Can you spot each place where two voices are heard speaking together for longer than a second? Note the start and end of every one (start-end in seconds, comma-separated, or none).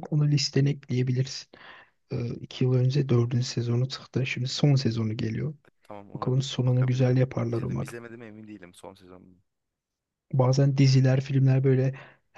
6.1-7.9